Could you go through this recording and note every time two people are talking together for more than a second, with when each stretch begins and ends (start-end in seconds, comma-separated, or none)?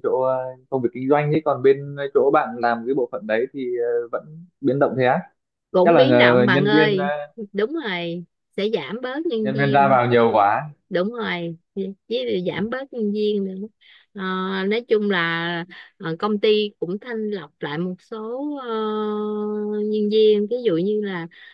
5.8-7.0